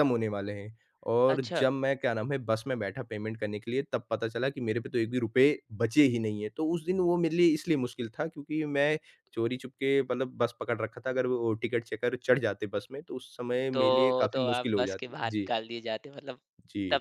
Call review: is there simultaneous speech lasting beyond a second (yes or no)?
yes